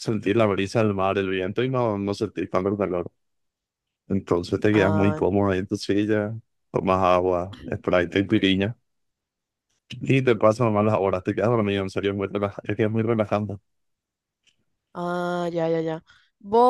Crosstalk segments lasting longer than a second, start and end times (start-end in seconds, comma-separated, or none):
none